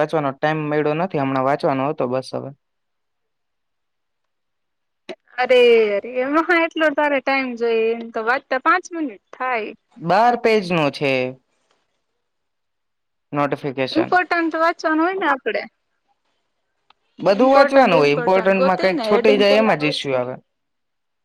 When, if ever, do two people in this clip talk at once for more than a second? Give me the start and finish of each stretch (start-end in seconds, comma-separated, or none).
17.4-20.0